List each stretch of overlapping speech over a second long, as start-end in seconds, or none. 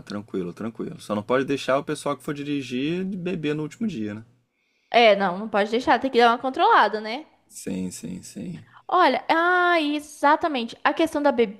none